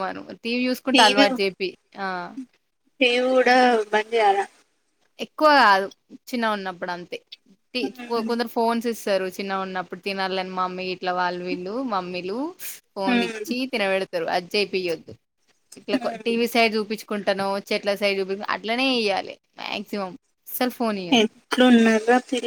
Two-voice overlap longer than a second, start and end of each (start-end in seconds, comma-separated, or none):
none